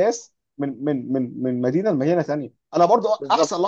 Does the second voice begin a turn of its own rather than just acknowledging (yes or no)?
no